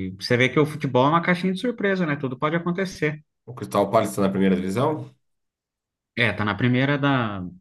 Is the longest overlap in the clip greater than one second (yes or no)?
no